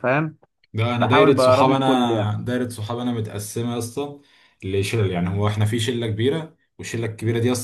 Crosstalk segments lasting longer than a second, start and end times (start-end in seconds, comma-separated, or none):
1.0-2.4